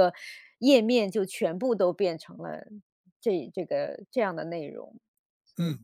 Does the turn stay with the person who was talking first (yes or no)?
no